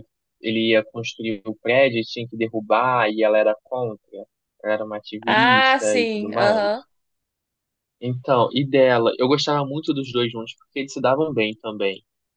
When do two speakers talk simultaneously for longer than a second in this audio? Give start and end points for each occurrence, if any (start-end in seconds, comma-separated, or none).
5.3-6.8